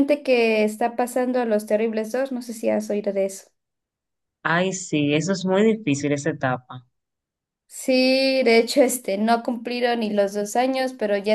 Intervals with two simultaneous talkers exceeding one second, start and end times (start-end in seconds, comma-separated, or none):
none